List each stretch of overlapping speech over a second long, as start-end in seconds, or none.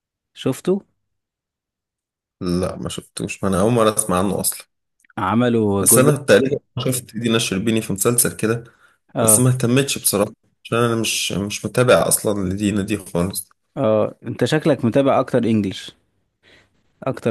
none